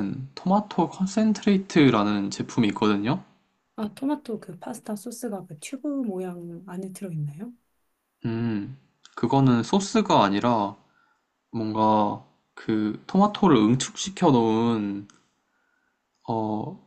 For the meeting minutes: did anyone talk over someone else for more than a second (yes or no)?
no